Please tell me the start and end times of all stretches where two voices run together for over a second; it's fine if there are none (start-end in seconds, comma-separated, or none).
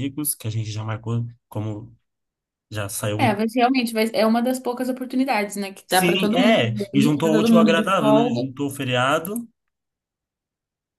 5.9-8.5